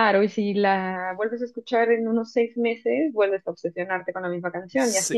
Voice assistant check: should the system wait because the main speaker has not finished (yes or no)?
no